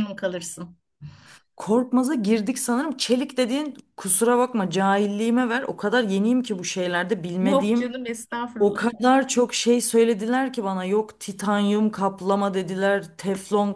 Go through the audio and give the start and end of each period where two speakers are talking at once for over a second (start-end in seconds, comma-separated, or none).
none